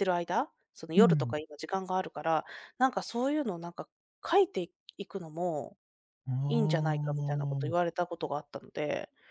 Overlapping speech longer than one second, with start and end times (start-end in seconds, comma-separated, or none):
6.5-7.7